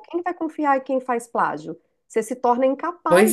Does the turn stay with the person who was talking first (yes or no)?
no